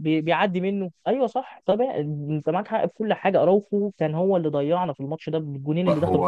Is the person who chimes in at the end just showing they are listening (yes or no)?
no